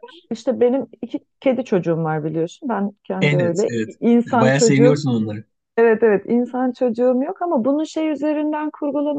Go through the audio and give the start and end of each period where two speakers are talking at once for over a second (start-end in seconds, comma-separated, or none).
3.2-5.0